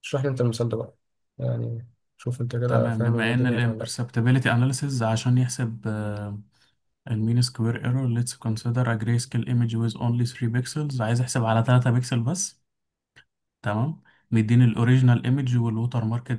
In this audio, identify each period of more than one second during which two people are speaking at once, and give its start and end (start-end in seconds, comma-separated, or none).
2.7-3.9